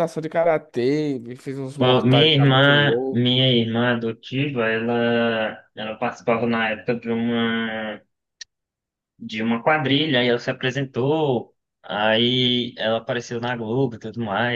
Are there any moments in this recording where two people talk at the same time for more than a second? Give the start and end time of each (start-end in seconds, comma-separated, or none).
1.8-3.3